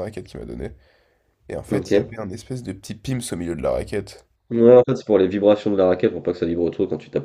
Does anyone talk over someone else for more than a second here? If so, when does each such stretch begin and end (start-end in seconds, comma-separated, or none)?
none